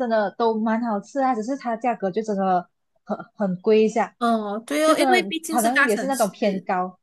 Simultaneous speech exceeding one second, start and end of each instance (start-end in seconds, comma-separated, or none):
4.8-6.3